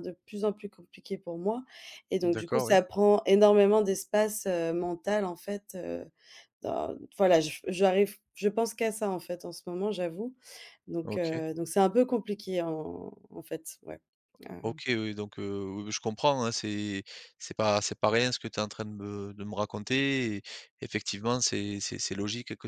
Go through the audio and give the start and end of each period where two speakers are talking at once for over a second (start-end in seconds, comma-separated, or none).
none